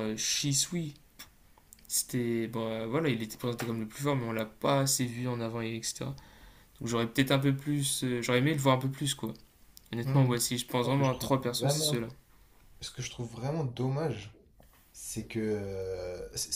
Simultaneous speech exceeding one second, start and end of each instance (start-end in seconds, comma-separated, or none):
10.0-12.0